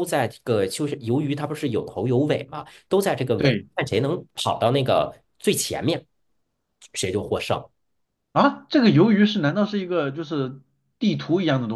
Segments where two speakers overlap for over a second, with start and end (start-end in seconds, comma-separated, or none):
none